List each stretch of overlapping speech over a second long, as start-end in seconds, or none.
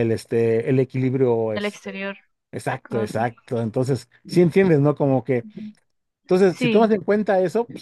none